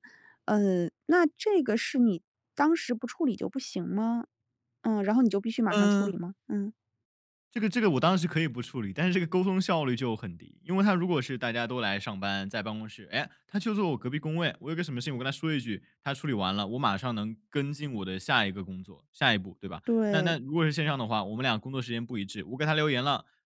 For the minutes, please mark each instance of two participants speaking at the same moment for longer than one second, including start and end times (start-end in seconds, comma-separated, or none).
none